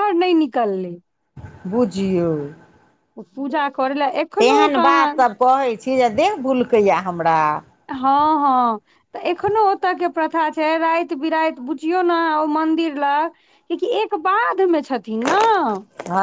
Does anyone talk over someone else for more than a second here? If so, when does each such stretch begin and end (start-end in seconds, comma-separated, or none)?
none